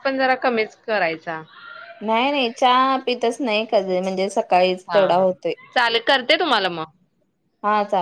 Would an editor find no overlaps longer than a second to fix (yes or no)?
yes